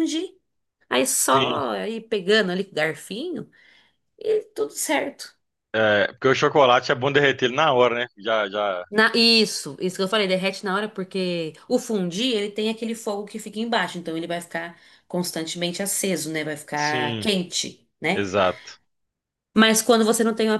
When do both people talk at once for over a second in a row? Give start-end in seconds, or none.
none